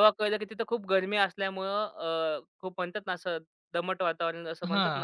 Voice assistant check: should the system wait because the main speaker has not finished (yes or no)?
no